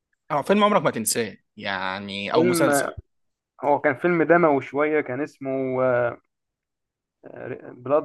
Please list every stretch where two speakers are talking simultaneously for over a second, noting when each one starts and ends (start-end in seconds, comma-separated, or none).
none